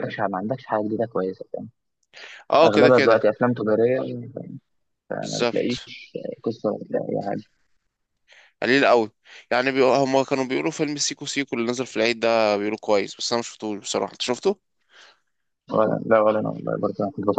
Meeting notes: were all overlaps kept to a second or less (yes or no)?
yes